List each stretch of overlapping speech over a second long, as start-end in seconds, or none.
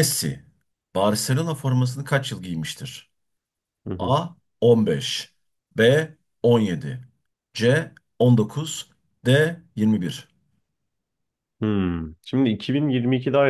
none